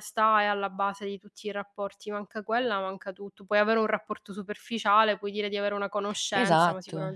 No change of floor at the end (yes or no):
no